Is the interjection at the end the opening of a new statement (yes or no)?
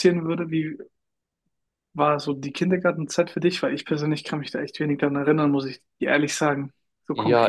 yes